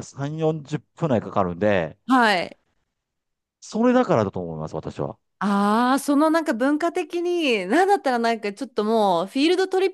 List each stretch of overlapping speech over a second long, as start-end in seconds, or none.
none